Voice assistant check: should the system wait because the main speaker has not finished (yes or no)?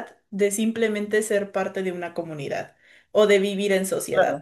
no